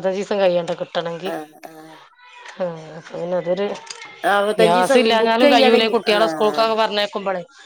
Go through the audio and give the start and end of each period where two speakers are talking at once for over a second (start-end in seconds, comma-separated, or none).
4.6-6.6